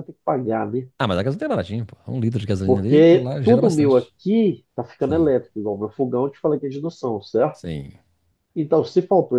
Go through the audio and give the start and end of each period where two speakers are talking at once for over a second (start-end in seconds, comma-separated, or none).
2.6-4.1